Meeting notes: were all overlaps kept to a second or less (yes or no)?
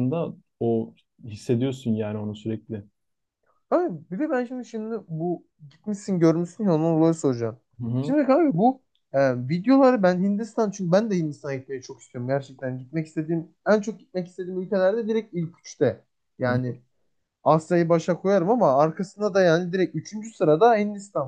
yes